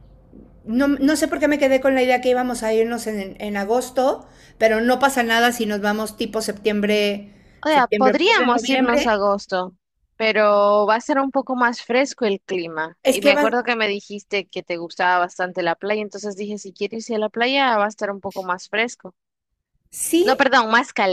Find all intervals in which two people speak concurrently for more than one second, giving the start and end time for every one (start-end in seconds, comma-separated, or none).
7.7-9.2